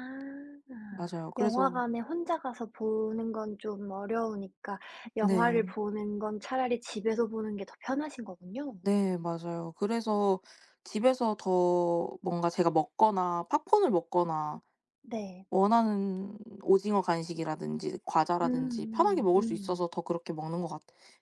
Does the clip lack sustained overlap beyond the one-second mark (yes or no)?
no